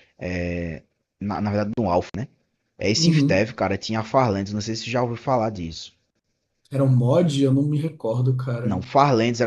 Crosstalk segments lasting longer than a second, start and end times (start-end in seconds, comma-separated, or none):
none